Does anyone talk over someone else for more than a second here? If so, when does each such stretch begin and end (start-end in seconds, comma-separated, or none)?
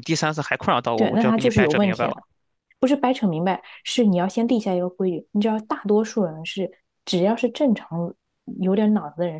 0.9-2.2